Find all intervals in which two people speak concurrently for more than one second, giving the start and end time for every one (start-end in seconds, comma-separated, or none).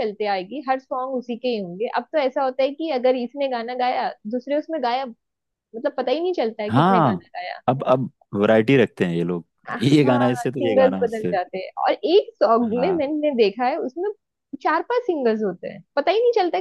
9.7-11.4